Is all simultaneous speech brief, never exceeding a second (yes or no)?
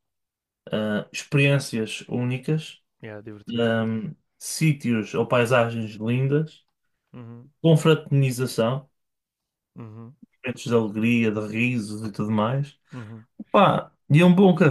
yes